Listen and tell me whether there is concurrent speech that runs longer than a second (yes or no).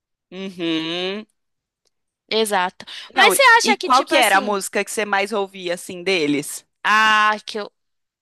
yes